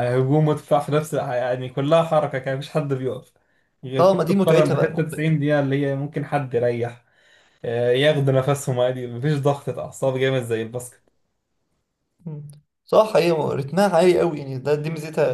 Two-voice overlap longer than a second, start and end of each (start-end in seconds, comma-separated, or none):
4.0-5.3